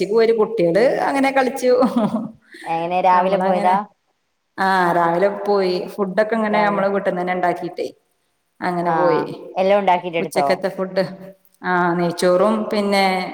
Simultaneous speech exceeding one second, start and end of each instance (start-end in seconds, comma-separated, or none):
none